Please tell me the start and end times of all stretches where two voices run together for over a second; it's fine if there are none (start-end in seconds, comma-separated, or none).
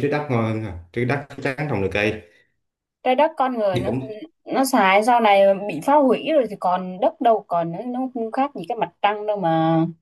none